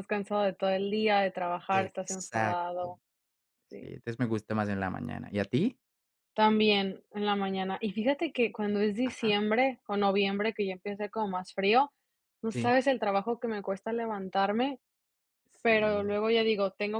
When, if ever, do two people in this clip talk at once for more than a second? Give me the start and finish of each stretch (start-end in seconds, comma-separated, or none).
1.7-2.9